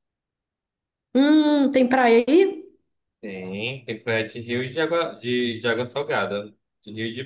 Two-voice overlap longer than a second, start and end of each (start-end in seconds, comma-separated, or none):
none